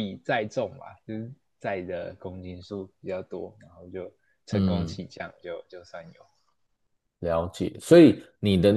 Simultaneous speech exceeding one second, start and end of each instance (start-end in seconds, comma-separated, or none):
none